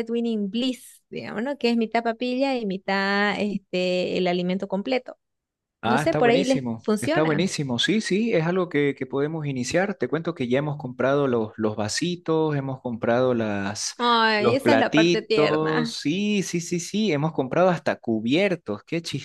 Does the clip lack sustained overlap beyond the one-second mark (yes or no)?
no